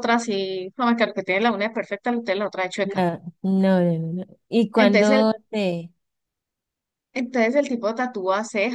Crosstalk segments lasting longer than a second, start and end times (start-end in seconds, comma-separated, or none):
none